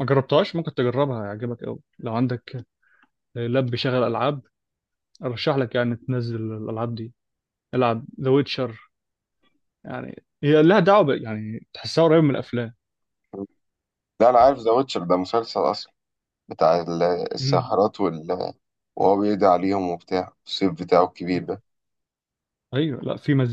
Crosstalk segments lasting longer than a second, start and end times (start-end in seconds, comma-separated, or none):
none